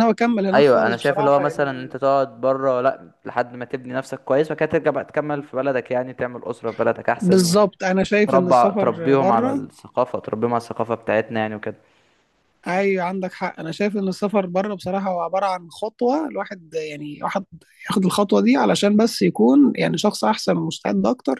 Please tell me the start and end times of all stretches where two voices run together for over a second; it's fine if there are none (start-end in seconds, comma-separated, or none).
0.5-1.9, 8.3-9.6